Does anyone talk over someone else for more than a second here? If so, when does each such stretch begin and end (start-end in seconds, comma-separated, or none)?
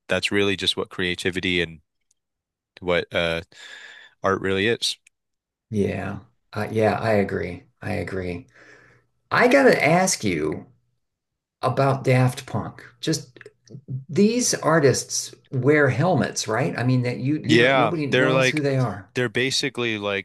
17.4-18.6